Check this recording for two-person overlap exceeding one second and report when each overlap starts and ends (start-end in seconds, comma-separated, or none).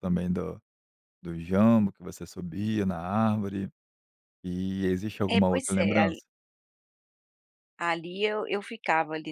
none